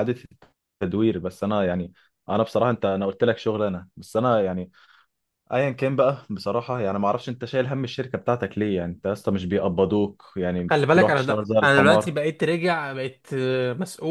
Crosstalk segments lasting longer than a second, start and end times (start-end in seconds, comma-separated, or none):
10.7-12.1